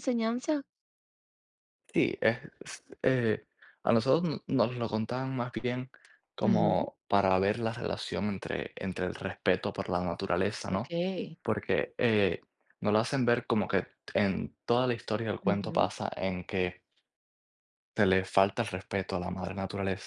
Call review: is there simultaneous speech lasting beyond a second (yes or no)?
no